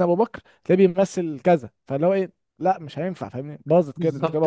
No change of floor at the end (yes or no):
no